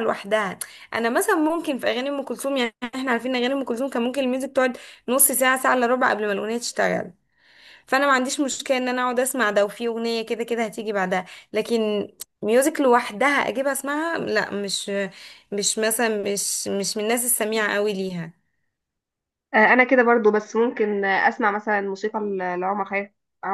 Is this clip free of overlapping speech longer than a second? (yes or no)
yes